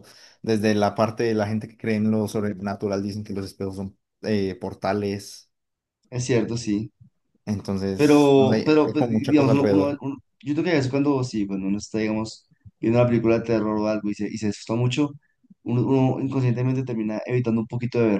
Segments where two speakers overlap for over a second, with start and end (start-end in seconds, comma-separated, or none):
8.0-10.0